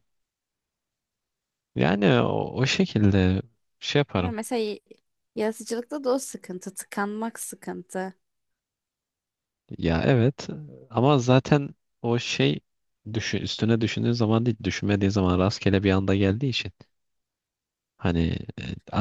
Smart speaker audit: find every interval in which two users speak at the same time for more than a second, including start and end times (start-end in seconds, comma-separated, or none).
none